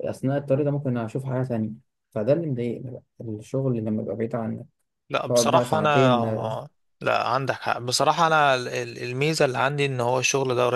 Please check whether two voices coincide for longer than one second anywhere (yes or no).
yes